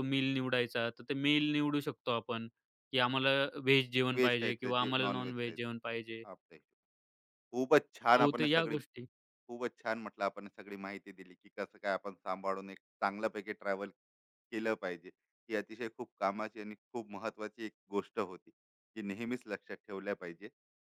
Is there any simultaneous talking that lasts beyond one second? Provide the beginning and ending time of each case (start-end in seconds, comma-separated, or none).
4.1-5.8